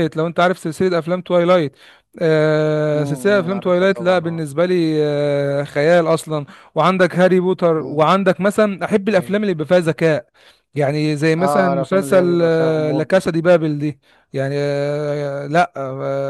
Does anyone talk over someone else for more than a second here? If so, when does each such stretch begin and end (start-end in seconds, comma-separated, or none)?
3.0-4.5, 11.4-13.3